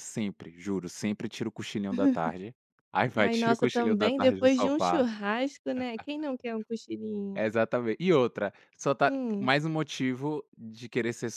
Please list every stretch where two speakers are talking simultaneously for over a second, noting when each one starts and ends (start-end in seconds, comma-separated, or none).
3.1-5.1